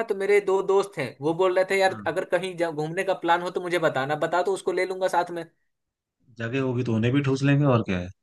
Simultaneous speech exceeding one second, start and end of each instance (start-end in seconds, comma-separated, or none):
none